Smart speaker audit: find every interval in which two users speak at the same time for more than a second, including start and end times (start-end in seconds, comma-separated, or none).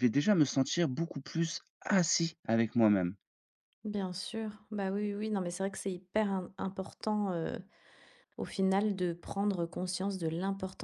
none